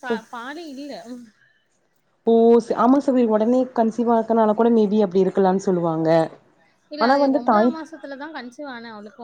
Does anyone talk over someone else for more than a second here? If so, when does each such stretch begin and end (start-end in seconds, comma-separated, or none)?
none